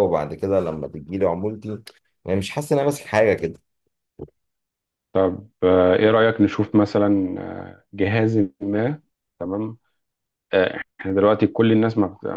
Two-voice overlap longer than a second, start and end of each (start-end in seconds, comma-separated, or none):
none